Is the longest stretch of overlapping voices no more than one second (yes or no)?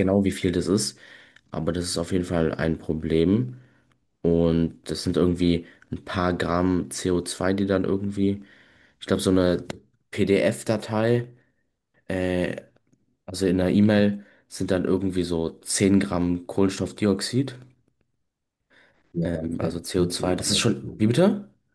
no